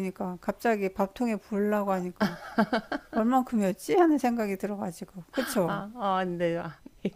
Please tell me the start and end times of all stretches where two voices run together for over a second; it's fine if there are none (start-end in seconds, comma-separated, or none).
none